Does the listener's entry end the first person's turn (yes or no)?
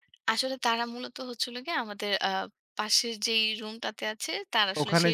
no